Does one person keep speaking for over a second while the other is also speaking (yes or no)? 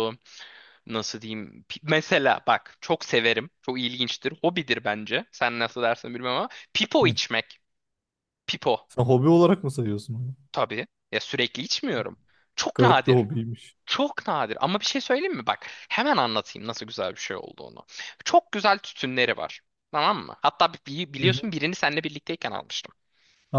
no